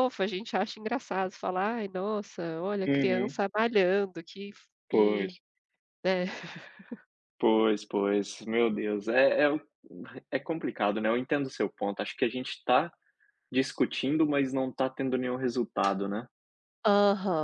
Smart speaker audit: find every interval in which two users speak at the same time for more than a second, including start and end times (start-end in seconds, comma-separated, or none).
none